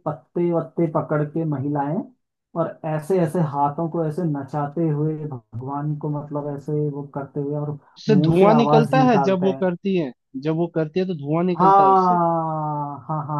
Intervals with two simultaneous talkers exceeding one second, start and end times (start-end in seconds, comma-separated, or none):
8.0-9.7